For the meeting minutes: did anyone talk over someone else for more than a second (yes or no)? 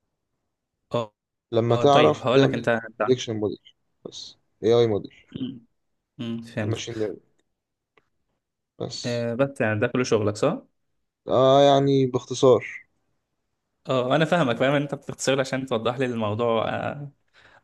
yes